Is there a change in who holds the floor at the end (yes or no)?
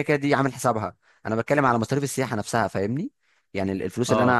no